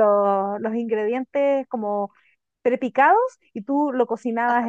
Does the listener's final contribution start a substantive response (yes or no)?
no